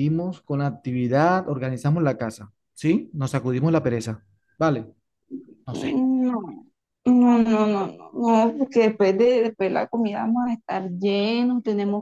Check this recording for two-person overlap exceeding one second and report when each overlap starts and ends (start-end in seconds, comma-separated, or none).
none